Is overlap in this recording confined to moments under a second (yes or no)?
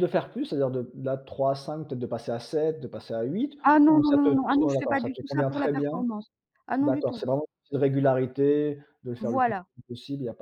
no